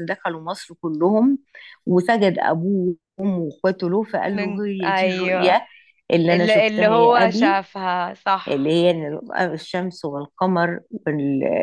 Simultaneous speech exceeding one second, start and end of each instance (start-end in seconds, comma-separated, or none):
4.3-5.6, 6.3-7.6